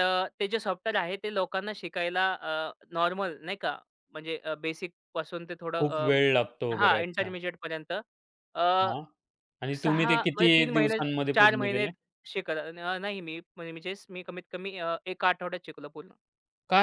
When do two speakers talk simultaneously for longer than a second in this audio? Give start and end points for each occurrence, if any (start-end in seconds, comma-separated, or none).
9.8-11.9